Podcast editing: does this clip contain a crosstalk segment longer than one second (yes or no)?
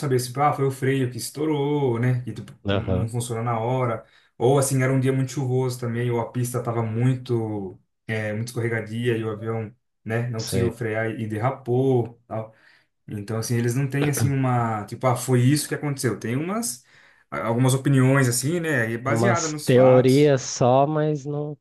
yes